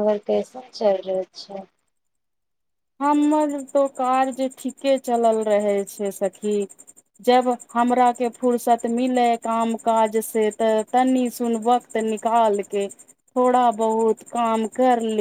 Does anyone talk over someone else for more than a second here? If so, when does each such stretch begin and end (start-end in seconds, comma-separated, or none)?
none